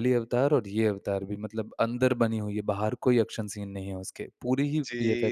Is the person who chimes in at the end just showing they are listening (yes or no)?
no